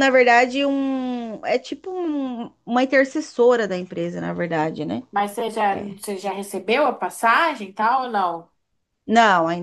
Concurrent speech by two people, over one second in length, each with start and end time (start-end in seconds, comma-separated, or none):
none